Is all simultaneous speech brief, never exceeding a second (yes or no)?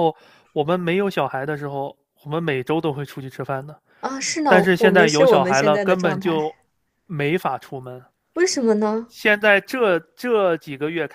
no